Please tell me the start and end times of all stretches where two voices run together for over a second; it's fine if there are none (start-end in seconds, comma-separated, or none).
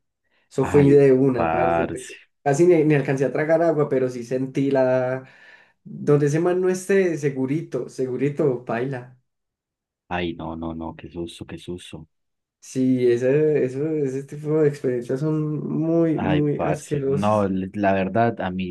0.6-2.0, 16.1-17.5